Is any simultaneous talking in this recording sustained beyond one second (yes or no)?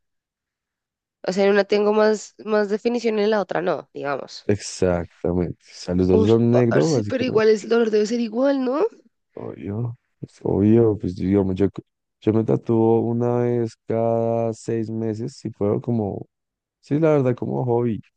yes